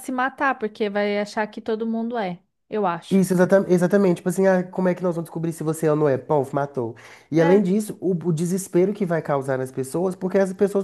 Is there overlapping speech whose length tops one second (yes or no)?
no